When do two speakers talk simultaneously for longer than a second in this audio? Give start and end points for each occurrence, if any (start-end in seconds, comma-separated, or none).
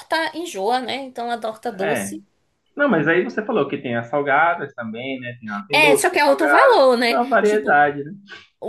5.7-7.8